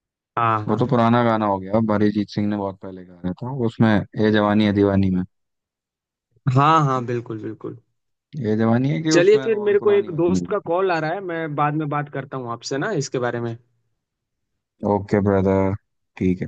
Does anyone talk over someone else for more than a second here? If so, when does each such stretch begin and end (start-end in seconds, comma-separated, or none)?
9.1-10.7